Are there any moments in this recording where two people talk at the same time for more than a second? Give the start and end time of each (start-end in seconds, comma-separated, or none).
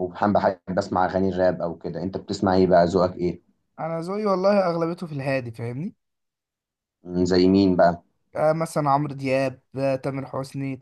none